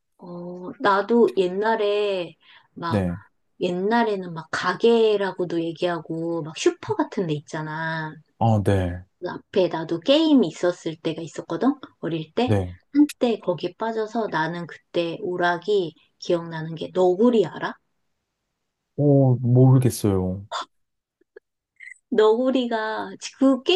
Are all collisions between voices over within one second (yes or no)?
yes